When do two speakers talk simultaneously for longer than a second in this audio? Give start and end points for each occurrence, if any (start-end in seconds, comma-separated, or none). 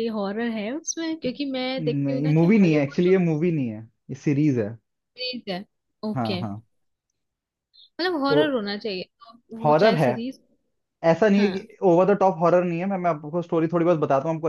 1.8-3.1